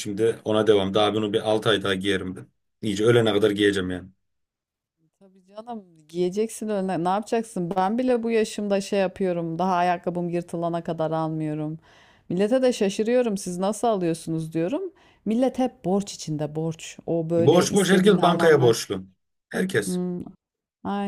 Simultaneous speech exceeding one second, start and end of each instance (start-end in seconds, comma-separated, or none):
17.4-18.7